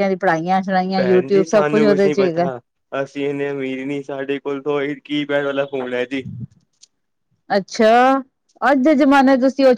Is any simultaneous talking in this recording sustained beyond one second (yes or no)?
yes